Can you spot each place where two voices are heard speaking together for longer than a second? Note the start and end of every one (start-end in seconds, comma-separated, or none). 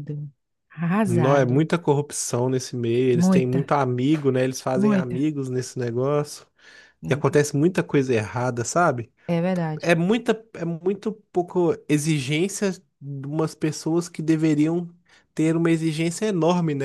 none